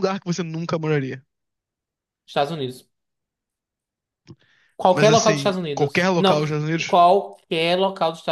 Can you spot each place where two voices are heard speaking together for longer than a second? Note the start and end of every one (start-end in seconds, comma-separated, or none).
4.9-7.0